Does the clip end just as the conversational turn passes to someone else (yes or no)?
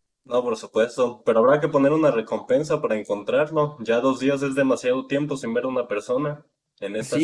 yes